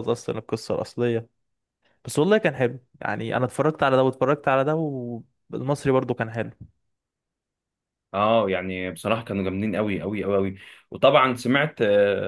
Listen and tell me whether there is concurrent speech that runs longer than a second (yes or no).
no